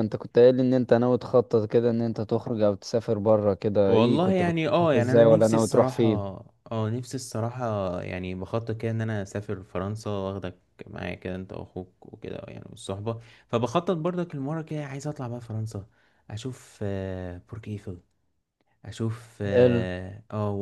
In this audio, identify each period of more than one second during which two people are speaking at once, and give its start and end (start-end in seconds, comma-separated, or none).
3.9-6.1